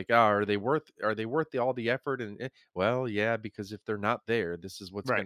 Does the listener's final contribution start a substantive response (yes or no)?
yes